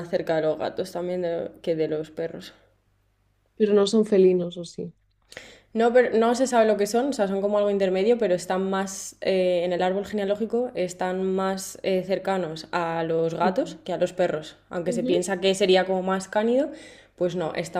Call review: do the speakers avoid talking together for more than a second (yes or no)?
yes